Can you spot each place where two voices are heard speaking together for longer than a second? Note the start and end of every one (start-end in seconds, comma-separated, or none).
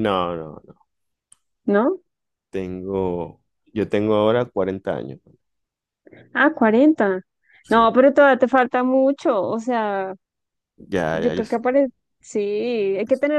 none